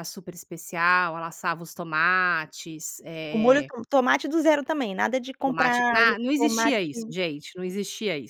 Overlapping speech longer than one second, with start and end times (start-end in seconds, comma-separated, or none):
5.4-7.1